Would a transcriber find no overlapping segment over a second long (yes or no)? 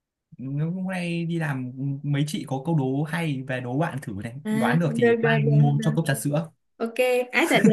no